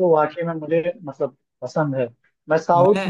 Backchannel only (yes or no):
yes